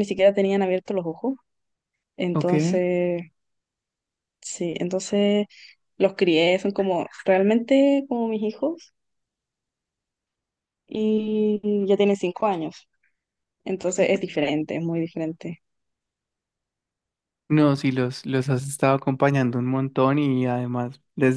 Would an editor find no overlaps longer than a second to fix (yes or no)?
yes